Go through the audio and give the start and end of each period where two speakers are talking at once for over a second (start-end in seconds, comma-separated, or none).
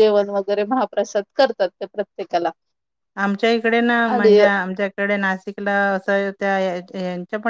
none